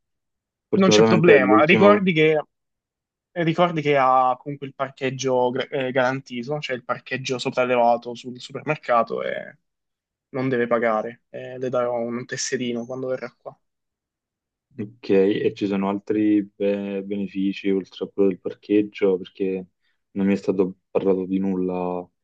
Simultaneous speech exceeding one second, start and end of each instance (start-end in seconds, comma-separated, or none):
0.7-2.0